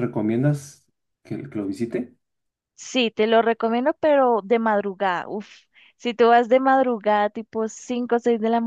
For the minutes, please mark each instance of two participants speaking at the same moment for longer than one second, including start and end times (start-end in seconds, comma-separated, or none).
none